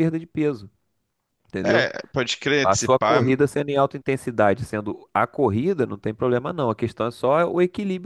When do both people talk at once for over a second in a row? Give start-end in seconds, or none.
none